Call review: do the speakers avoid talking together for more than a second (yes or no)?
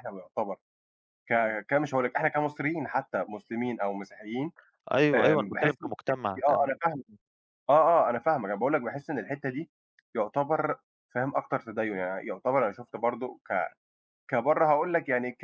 no